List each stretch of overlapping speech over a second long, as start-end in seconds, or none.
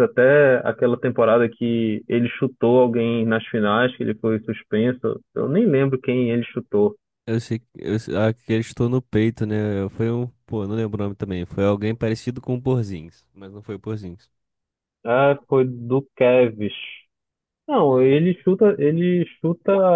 none